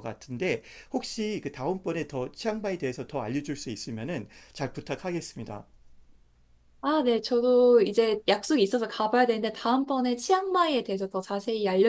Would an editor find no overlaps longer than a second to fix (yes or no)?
yes